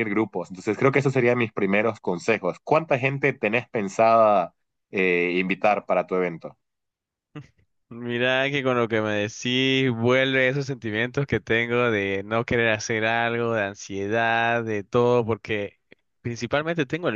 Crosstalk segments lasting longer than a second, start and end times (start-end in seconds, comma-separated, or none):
none